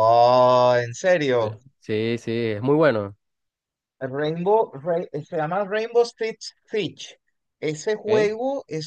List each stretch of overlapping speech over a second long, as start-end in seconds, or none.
none